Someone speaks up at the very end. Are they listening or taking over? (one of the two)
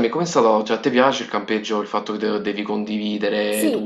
taking over